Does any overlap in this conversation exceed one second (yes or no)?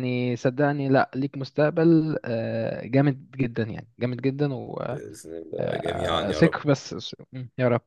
yes